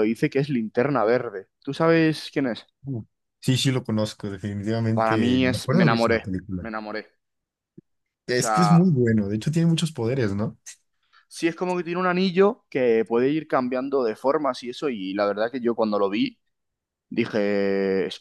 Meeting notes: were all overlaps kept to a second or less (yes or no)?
no